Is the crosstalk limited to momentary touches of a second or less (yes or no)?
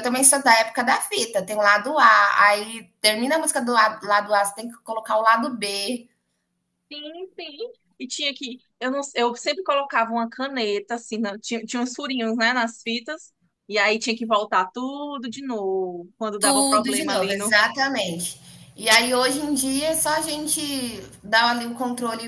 no